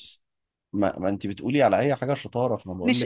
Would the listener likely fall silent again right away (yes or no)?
no